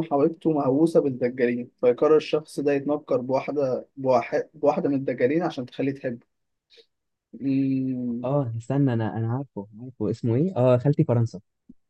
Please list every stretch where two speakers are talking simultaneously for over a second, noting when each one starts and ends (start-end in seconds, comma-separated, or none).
none